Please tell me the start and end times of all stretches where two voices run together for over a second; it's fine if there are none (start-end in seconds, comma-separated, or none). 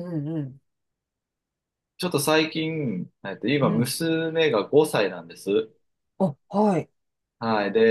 none